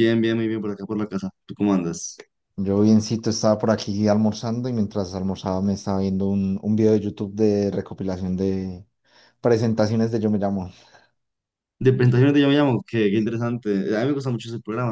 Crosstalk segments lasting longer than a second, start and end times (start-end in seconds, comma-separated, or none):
none